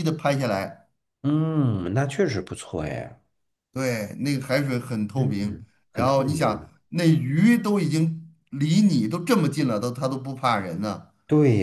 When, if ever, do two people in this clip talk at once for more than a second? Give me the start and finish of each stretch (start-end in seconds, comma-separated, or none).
5.2-6.7